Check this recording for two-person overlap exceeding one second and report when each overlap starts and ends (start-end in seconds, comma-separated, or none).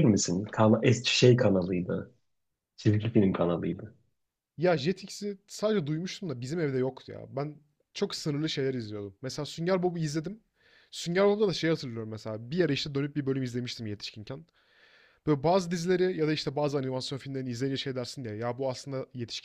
none